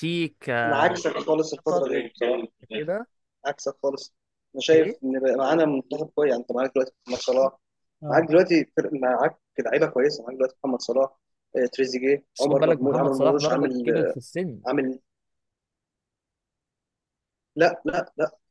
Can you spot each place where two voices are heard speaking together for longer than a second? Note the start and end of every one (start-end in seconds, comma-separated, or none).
12.3-13.9